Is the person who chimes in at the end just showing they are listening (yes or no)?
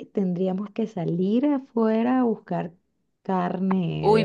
no